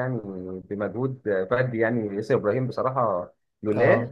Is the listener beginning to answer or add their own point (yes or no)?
no